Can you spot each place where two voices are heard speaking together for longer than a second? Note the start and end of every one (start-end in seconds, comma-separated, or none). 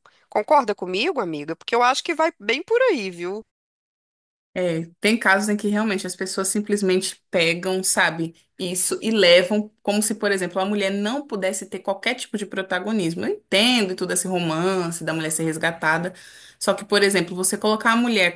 none